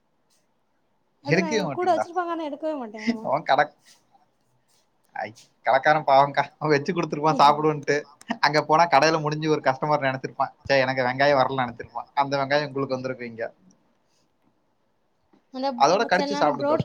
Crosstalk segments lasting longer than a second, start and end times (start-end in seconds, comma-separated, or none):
none